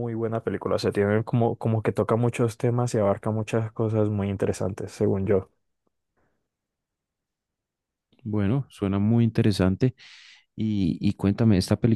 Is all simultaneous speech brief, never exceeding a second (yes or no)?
yes